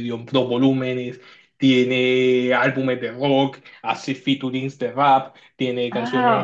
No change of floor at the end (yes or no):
no